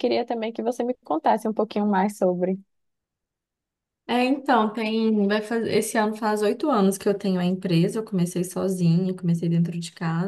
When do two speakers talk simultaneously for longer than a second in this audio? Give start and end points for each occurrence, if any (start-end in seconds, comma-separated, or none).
none